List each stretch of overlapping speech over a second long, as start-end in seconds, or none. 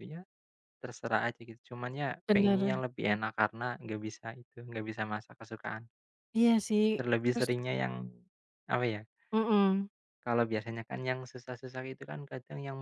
none